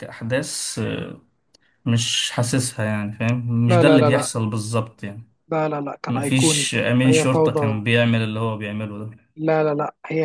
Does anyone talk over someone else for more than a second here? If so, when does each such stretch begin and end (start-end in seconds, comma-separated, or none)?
6.1-7.8